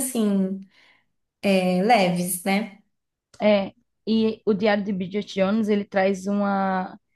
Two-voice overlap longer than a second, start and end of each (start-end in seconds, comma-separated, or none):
none